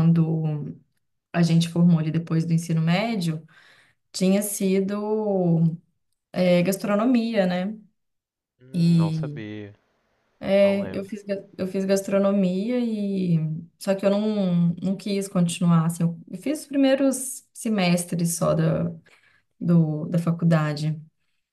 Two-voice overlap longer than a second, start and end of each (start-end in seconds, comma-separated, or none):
none